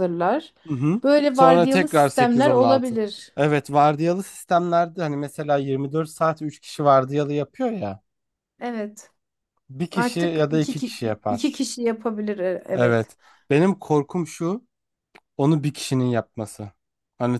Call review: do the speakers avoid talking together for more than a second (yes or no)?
no